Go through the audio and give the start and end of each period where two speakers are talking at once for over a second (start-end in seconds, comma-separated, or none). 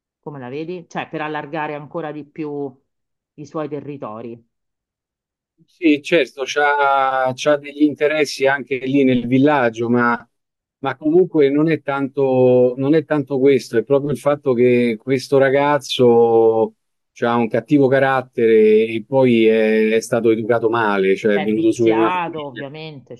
21.3-22.6